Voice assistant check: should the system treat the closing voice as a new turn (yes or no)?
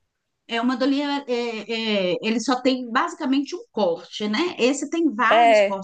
no